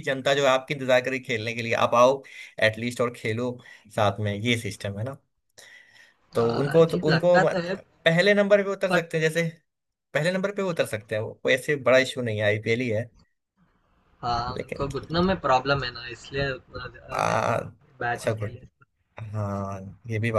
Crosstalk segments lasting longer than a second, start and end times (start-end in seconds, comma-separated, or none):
6.4-7.7